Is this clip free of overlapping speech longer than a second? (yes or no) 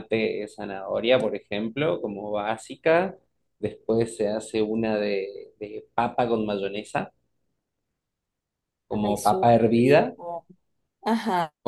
no